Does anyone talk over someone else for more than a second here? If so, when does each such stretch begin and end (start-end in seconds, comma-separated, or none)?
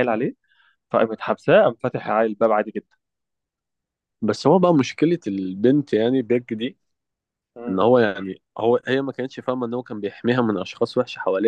none